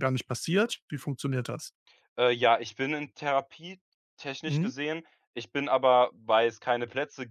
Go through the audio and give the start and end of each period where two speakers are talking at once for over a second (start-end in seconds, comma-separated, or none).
none